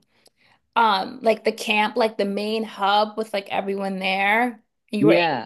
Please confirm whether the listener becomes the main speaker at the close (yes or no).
no